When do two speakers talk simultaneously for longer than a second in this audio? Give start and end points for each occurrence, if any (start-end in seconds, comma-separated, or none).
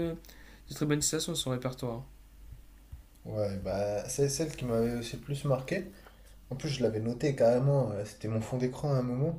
none